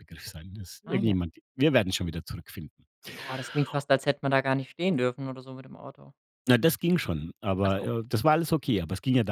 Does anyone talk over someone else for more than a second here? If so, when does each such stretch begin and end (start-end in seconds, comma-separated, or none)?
none